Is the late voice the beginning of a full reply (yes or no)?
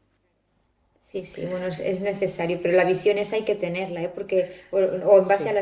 no